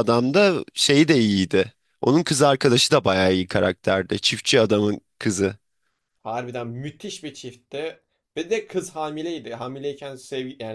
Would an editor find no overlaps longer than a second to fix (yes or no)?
yes